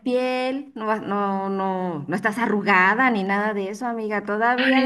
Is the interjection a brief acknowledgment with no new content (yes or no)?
no